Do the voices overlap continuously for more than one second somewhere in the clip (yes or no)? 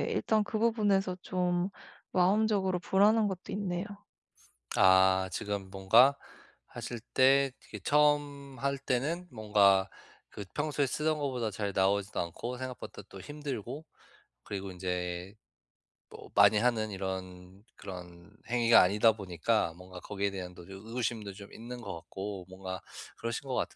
no